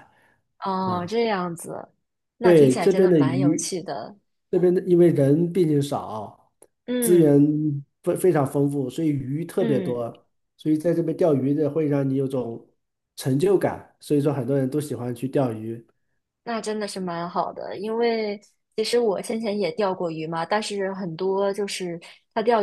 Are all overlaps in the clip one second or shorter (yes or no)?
no